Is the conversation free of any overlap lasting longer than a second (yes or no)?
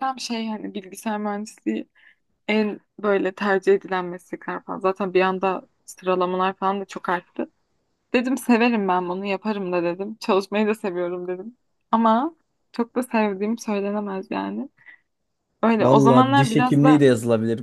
no